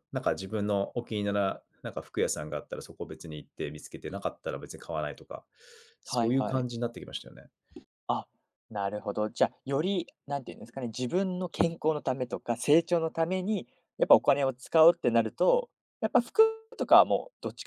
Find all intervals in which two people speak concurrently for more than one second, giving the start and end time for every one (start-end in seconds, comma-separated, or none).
none